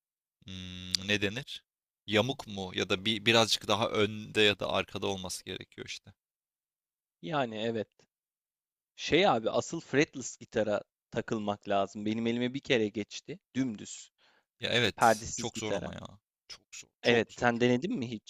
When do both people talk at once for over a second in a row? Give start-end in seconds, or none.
14.7-15.9